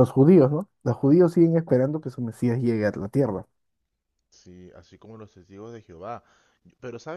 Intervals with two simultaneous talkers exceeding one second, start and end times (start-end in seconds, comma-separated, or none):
none